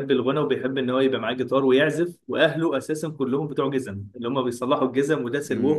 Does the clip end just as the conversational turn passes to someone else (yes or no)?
no